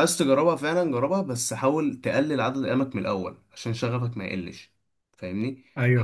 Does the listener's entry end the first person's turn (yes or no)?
no